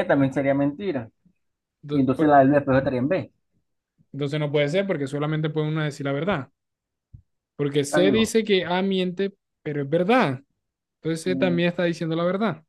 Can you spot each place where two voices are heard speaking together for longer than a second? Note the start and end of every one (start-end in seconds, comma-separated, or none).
none